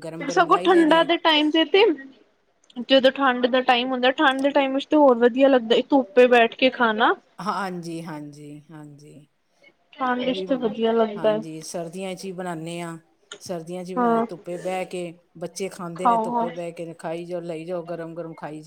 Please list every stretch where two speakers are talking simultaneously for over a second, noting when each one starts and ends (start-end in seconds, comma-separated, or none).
none